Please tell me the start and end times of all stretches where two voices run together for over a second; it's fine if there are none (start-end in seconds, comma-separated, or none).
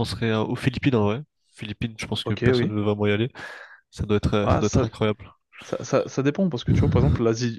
none